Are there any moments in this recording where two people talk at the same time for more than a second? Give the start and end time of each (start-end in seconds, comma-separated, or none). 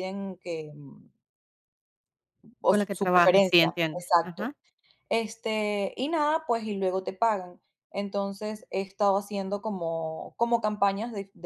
2.7-4.5